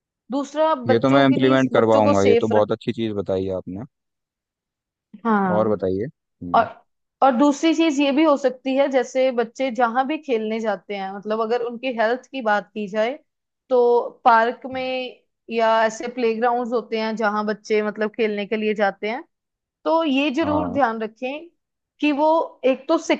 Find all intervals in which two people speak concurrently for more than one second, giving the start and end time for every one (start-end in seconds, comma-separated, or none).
0.9-2.7